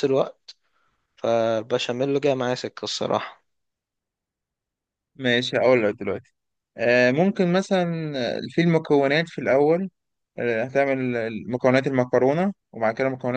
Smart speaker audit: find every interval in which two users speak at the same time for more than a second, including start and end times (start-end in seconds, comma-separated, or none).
none